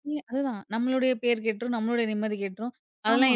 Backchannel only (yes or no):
yes